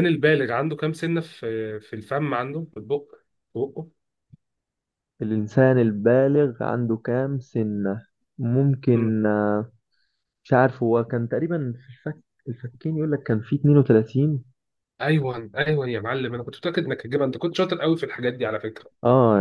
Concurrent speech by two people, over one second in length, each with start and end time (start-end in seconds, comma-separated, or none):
none